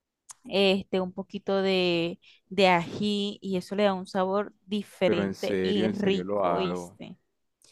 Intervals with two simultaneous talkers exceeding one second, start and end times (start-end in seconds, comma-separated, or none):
5.0-7.0